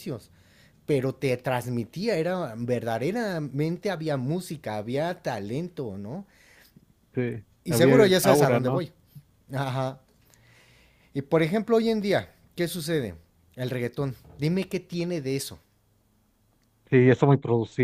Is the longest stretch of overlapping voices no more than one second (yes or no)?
no